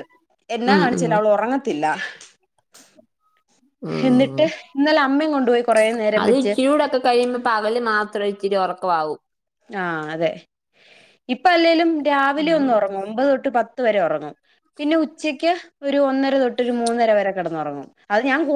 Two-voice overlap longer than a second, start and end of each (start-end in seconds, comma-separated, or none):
none